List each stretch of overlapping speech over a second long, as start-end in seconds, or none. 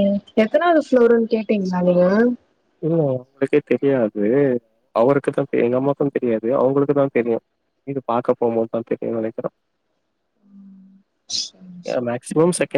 none